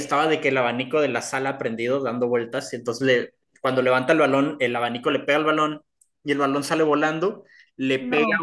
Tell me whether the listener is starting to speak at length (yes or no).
no